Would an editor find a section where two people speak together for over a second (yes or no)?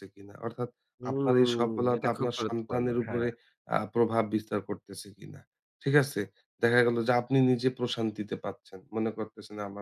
yes